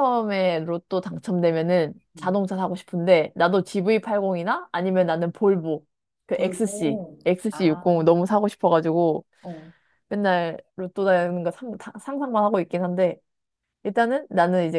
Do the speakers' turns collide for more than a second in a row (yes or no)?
yes